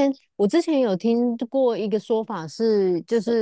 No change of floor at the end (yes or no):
yes